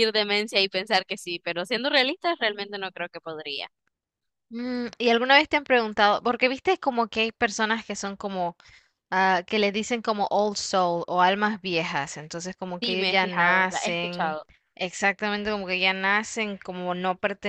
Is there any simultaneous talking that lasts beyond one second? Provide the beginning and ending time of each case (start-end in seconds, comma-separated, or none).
12.8-14.4